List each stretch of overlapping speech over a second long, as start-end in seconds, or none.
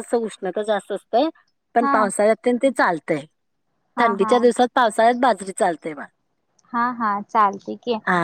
none